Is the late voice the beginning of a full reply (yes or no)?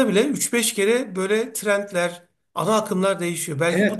yes